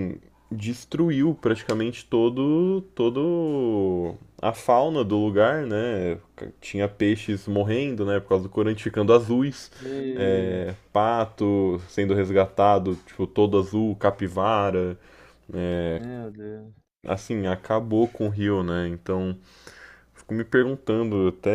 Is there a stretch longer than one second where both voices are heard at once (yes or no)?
no